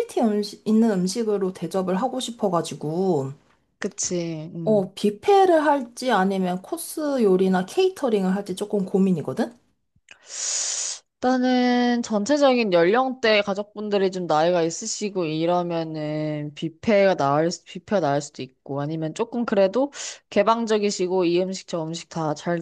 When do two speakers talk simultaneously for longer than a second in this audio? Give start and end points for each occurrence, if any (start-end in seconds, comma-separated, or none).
none